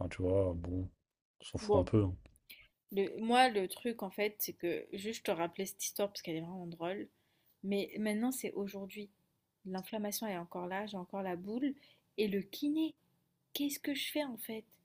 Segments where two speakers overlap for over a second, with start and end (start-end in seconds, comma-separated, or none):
none